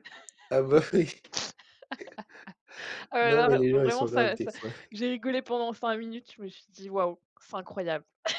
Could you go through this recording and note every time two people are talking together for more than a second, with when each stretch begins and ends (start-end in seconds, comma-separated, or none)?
3.2-4.5